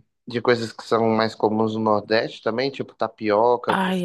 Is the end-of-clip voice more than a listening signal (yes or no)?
yes